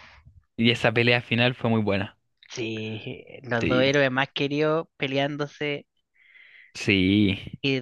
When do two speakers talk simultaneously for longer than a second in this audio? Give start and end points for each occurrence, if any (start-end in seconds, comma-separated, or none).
none